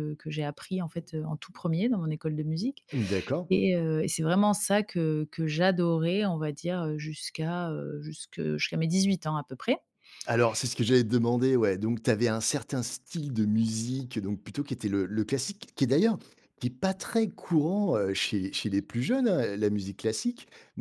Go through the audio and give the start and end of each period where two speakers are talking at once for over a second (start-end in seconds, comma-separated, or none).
none